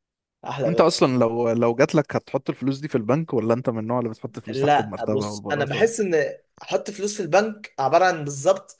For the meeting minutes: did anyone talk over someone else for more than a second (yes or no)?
yes